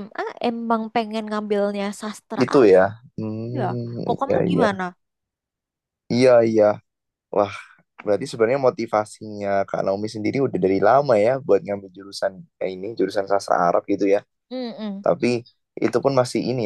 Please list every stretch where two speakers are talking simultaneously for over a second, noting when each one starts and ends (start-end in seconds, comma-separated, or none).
3.2-4.7